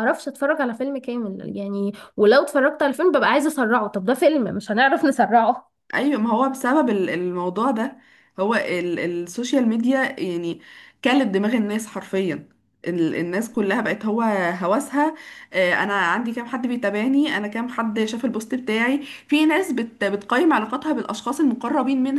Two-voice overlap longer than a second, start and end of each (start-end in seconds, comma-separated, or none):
none